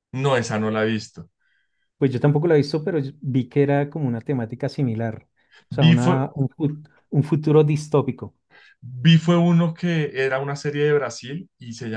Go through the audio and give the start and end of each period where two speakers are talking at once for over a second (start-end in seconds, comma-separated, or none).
none